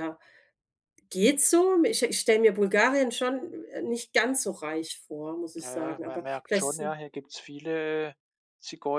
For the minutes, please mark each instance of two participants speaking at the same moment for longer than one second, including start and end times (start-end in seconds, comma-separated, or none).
5.5-7.0